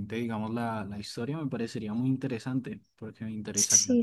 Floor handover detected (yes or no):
yes